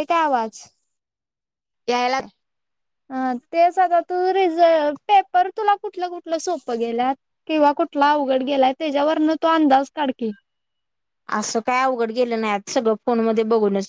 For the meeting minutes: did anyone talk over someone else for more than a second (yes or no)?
no